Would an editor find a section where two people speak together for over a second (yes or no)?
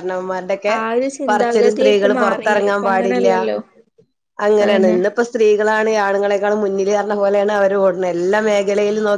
yes